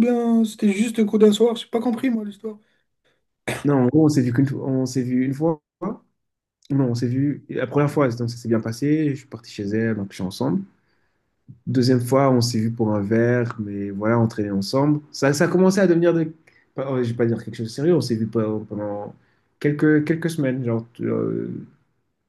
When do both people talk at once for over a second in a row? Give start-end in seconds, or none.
none